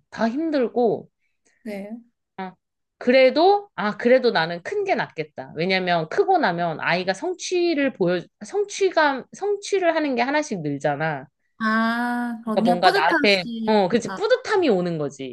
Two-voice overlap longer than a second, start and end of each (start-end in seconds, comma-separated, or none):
12.4-14.2